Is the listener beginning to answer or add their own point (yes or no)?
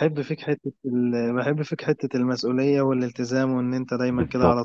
yes